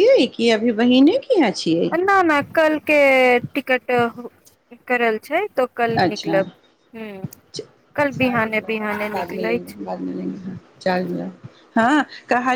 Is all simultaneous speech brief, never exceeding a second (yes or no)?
no